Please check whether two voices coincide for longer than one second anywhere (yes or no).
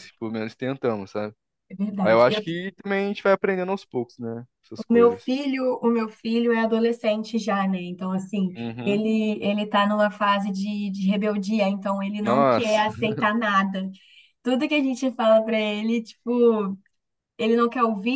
no